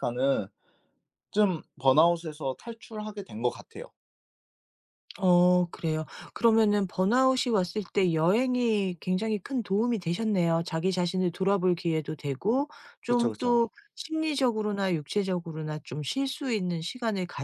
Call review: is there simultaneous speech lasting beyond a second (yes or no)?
no